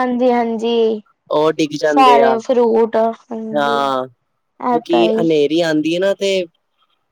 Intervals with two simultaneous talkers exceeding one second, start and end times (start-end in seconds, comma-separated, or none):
none